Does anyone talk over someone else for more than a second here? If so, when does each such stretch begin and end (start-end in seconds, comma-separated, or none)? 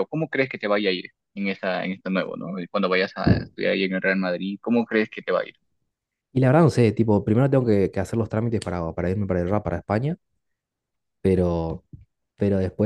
none